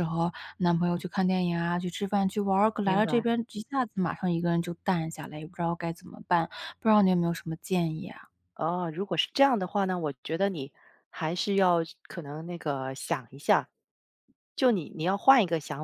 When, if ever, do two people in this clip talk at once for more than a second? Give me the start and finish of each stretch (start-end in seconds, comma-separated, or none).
none